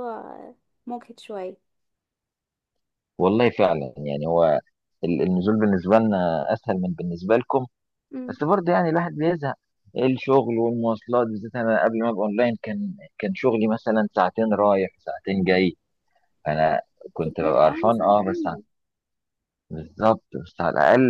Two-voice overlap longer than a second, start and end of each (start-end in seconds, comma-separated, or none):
17.2-18.6